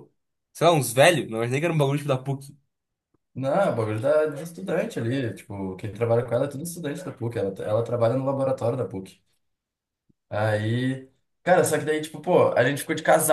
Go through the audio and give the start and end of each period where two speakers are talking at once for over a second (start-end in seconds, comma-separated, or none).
none